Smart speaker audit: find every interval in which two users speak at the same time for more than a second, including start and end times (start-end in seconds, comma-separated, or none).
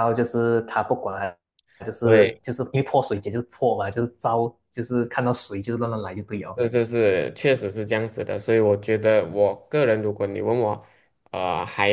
none